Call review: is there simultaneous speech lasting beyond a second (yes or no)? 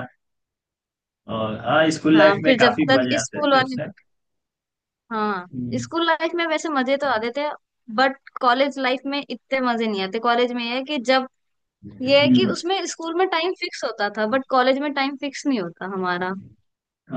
yes